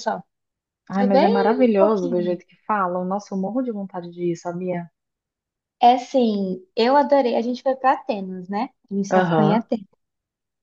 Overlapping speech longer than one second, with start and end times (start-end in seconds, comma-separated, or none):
0.9-2.4